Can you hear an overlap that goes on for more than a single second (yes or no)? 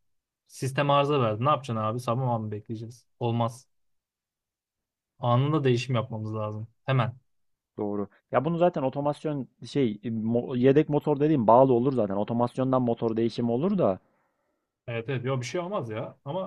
no